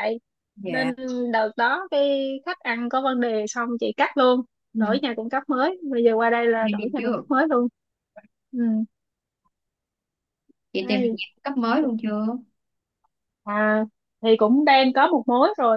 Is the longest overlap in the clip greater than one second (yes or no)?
no